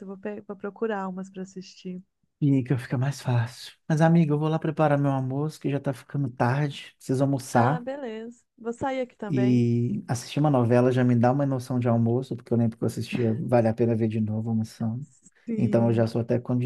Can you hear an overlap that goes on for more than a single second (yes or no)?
no